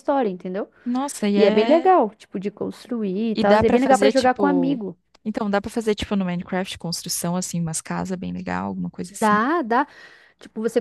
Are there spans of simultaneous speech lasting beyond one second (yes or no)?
yes